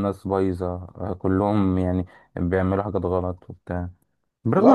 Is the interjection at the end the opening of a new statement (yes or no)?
yes